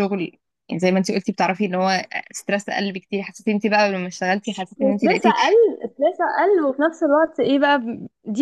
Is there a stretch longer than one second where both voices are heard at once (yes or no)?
no